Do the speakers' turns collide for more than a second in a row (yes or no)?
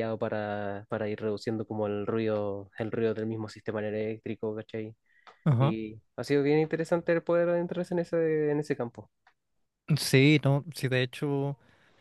no